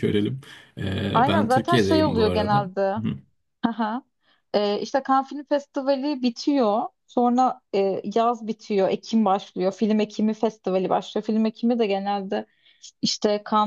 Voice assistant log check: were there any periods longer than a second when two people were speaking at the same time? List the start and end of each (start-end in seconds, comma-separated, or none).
1.1-3.0